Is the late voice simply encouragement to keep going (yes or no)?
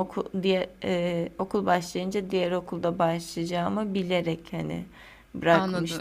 no